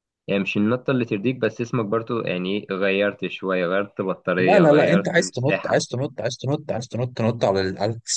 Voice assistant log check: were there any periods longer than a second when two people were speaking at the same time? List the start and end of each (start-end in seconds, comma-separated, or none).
4.4-5.9